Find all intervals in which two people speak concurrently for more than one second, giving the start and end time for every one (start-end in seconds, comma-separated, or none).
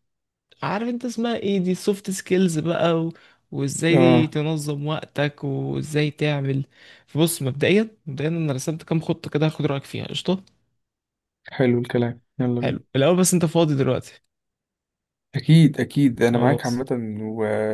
none